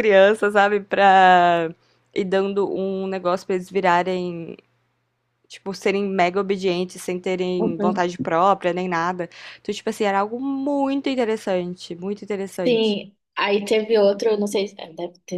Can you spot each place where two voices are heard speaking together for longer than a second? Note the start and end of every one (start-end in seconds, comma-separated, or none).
none